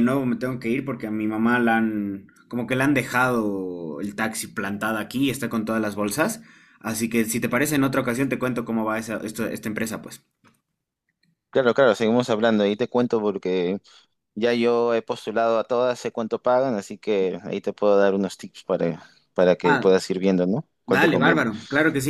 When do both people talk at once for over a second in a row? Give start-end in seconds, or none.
none